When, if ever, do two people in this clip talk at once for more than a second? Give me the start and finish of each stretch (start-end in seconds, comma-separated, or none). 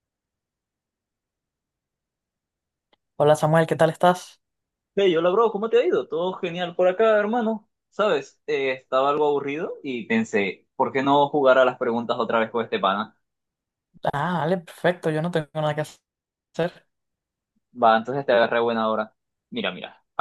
none